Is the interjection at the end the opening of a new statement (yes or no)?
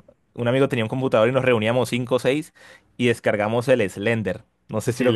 yes